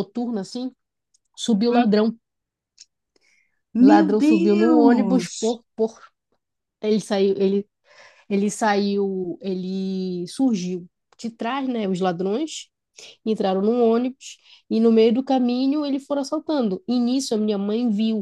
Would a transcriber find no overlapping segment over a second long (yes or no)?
no